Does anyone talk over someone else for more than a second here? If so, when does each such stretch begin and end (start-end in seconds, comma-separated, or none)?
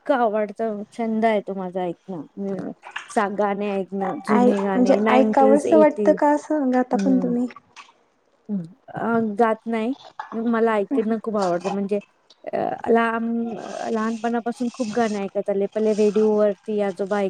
4.4-6.1